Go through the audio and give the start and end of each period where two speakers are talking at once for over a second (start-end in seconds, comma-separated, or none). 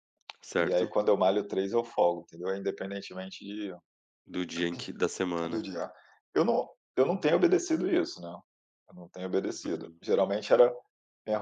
none